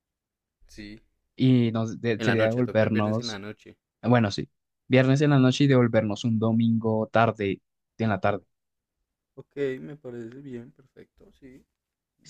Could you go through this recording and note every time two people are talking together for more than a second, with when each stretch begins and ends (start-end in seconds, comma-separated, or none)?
2.2-3.4